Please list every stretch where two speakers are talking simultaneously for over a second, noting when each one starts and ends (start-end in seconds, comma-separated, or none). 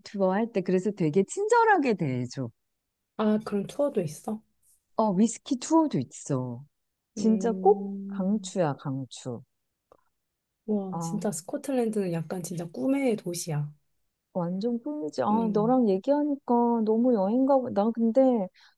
7.2-8.5